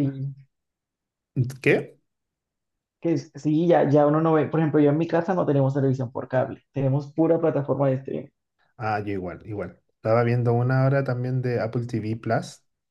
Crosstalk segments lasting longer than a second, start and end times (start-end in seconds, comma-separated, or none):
none